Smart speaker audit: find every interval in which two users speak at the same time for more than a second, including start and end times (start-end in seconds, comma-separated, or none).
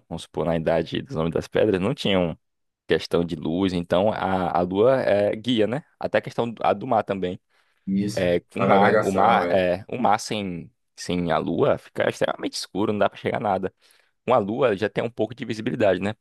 8.1-9.7